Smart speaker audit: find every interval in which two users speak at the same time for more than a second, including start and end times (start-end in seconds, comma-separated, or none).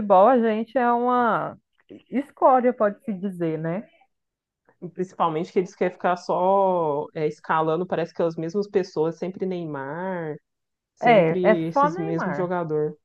11.0-12.5